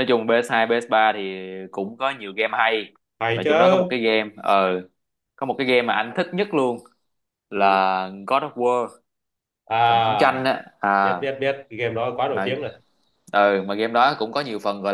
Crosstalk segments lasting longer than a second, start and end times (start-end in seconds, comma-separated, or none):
none